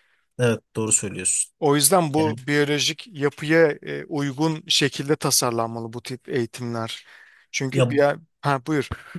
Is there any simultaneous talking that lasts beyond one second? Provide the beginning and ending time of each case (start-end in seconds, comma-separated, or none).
none